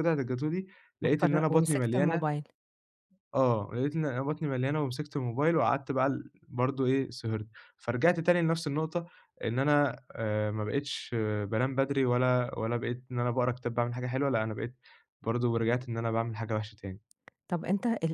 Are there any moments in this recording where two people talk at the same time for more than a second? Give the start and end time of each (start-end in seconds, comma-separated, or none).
1.0-2.4